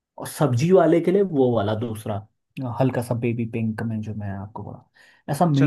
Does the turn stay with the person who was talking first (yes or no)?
no